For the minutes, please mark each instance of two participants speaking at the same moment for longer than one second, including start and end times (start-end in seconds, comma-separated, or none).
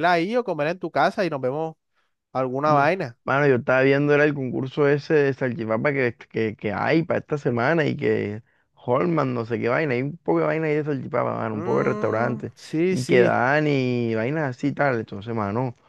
11.5-13.4